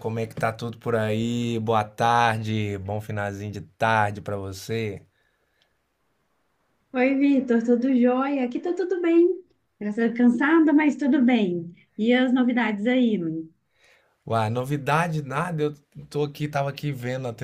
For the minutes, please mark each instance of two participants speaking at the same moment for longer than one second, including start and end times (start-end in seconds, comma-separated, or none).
none